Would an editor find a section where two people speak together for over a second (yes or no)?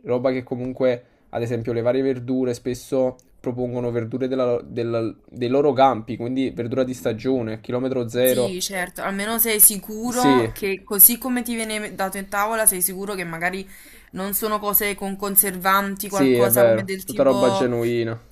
yes